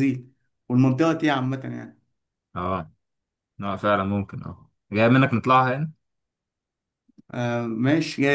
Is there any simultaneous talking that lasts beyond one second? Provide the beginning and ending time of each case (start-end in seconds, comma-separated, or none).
none